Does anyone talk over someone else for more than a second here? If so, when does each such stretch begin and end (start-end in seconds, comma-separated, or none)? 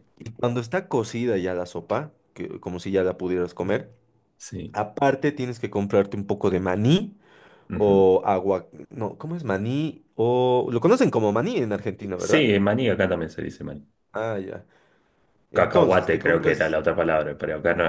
15.5-16.8